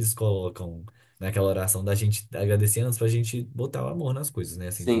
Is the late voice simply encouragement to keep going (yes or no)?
no